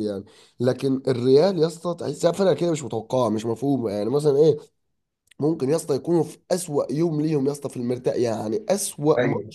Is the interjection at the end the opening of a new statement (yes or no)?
no